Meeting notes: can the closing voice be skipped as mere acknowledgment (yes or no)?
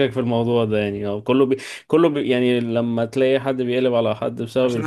no